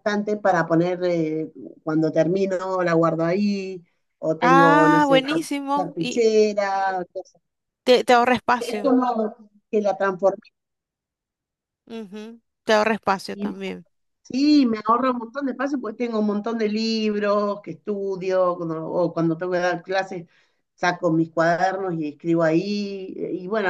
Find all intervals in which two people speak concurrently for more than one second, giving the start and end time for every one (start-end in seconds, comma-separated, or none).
4.4-6.2